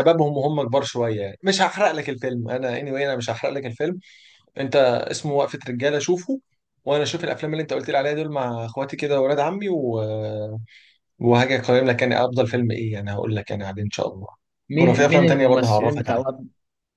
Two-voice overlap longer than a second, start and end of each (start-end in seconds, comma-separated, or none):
14.8-16.2